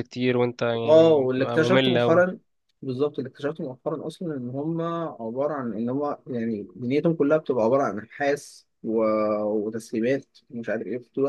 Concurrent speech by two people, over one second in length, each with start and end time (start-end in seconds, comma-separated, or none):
0.9-2.2